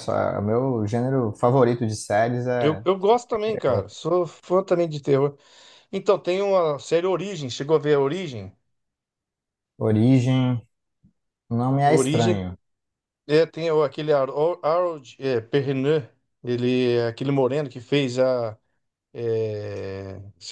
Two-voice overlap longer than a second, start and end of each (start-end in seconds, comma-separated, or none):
none